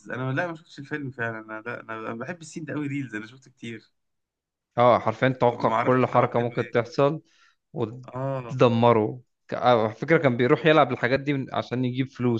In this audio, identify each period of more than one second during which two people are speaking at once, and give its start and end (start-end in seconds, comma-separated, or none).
5.5-6.9